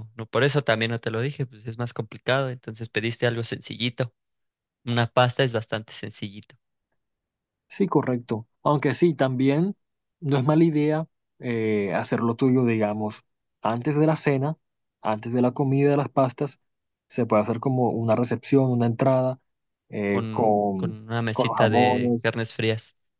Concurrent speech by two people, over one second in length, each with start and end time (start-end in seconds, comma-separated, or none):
20.1-22.4